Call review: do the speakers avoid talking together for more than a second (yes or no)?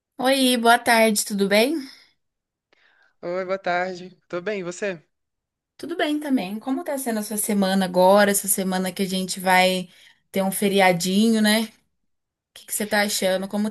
yes